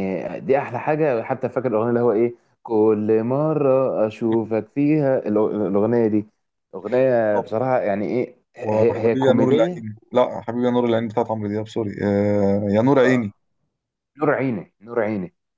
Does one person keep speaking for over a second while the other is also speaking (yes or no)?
yes